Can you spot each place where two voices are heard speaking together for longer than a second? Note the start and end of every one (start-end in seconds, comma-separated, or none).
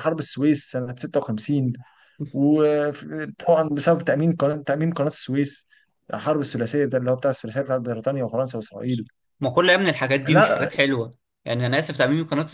none